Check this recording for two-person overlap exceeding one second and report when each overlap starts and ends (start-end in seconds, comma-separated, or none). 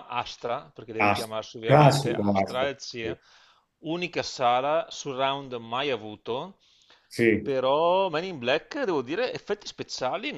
1.0-2.7